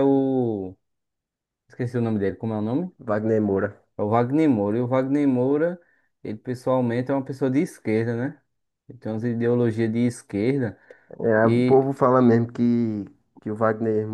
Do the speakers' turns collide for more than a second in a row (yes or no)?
no